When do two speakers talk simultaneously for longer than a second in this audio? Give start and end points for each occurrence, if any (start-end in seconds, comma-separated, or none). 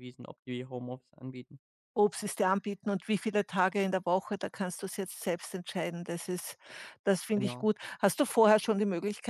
none